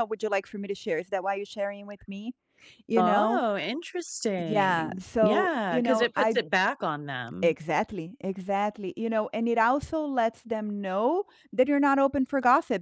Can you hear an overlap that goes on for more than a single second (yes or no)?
yes